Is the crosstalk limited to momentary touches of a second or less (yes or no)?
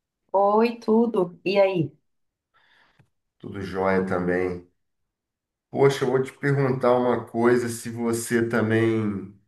yes